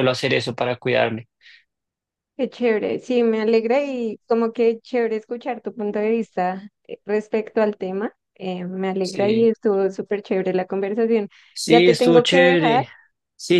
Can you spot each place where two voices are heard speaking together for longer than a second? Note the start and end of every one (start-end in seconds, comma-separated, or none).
11.7-12.8